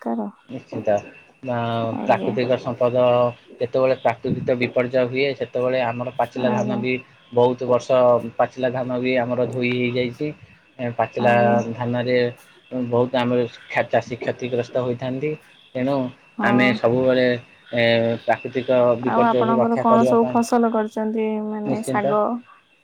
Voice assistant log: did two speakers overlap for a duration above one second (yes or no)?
no